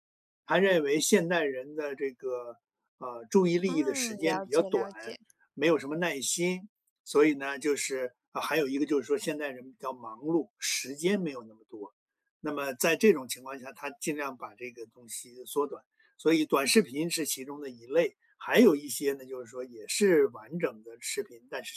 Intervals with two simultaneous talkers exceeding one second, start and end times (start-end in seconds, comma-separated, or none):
3.6-4.9